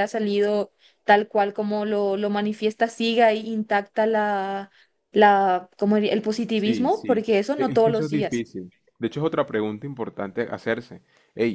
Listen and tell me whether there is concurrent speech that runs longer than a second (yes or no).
yes